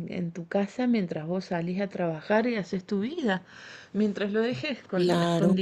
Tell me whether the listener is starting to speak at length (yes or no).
no